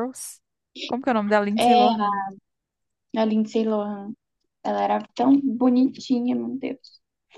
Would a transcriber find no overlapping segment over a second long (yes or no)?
yes